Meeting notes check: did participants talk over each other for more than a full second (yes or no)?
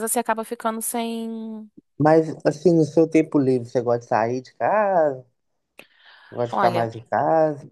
no